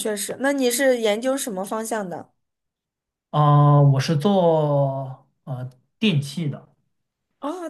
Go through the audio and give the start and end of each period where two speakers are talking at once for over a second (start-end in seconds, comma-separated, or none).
none